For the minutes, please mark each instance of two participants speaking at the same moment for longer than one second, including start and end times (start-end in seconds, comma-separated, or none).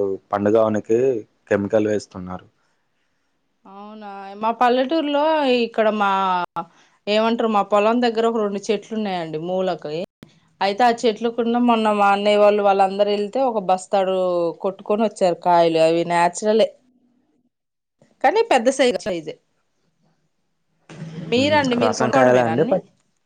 none